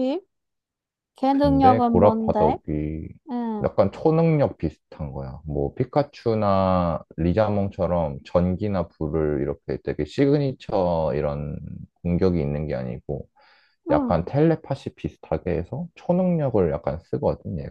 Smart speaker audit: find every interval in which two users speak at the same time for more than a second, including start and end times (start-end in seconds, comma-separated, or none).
1.3-2.6